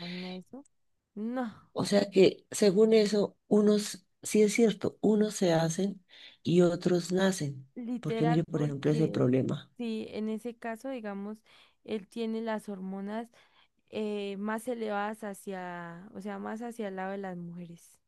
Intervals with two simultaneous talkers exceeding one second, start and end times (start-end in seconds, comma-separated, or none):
7.8-9.3